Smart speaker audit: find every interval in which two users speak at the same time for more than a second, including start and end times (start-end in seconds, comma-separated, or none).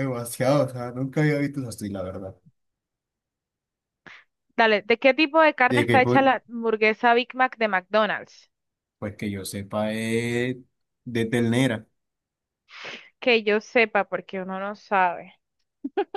none